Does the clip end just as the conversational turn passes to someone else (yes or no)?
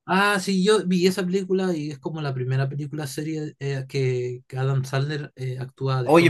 yes